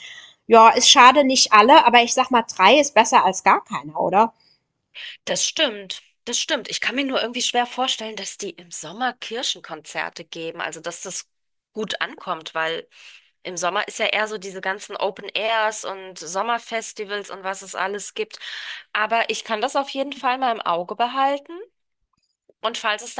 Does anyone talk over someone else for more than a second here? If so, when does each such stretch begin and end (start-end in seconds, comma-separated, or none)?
none